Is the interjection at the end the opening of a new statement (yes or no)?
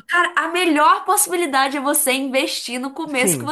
yes